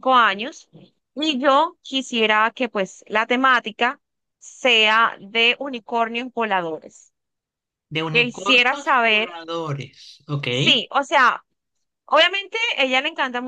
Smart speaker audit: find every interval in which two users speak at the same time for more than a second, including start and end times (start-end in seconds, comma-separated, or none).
8.1-9.3